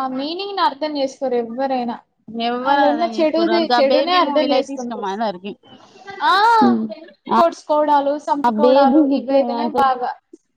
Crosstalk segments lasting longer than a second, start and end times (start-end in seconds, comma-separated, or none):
2.7-5.1